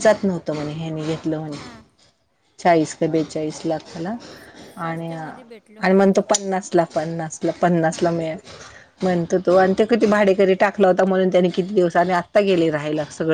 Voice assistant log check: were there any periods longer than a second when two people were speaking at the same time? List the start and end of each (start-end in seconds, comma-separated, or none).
4.8-6.3